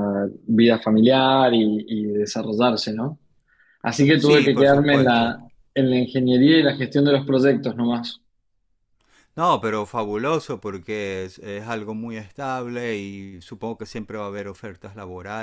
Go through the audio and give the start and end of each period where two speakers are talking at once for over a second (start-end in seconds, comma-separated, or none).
4.1-5.4